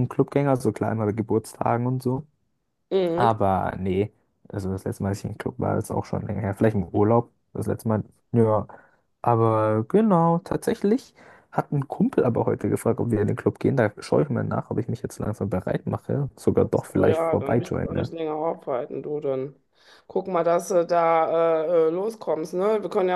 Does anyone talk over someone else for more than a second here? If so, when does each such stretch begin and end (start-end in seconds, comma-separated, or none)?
16.7-18.1